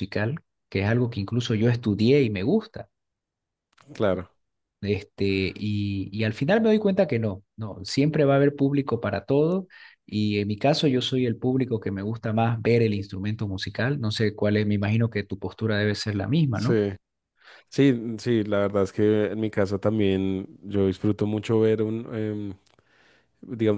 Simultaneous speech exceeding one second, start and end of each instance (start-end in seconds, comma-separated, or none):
none